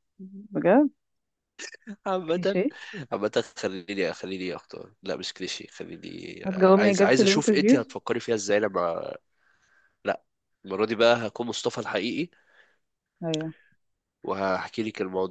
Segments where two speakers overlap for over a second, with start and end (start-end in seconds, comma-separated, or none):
6.4-7.9